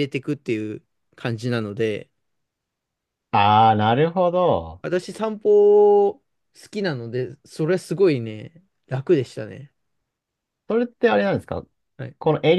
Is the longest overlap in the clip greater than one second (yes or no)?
no